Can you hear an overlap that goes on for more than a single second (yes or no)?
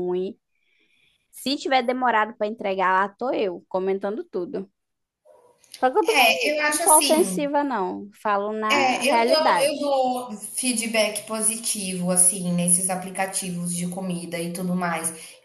yes